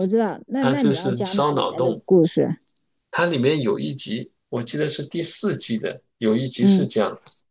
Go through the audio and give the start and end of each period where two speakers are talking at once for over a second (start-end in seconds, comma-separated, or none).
0.6-2.0